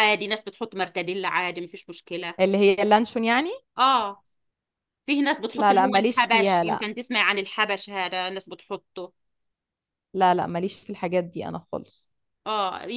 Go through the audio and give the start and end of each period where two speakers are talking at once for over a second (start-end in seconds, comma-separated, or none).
5.5-6.8